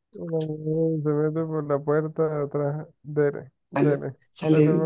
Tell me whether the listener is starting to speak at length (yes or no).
yes